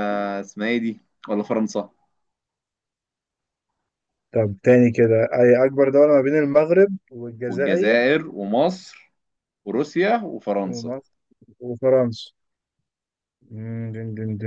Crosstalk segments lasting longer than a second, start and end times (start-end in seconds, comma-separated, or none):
none